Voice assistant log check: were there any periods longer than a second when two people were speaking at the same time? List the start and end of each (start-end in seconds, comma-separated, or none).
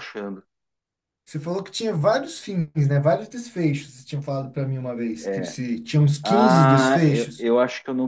6.2-7.5